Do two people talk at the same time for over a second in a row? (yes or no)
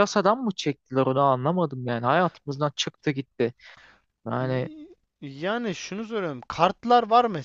no